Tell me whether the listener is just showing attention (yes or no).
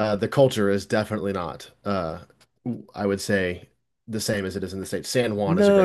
no